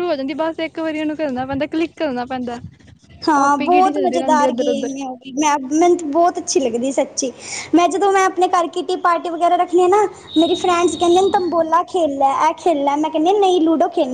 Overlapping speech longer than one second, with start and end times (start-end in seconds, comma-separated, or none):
3.4-4.9